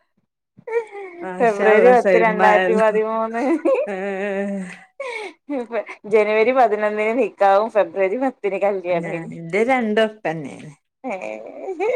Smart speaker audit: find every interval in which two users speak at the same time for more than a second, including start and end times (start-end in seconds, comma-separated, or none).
1.4-2.9